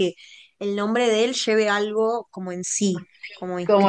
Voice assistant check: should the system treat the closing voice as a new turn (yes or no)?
yes